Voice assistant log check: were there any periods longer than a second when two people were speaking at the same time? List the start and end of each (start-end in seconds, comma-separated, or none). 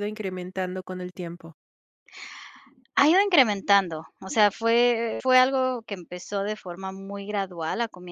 none